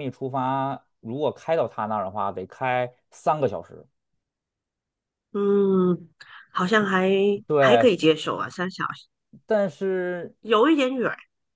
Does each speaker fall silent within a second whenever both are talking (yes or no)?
yes